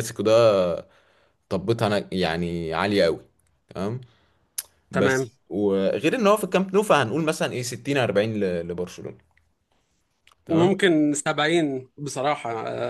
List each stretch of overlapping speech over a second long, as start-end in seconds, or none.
none